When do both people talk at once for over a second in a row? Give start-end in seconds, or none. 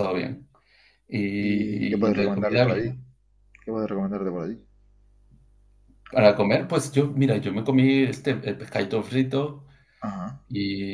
1.4-2.9